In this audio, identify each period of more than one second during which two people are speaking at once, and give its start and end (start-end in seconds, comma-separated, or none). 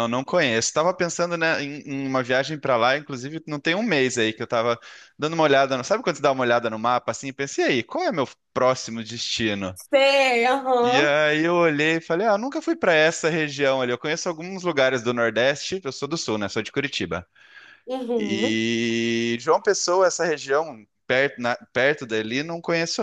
none